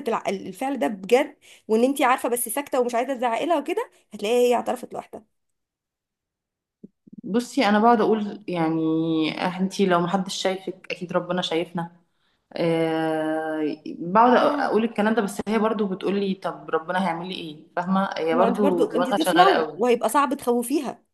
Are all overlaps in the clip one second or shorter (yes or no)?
no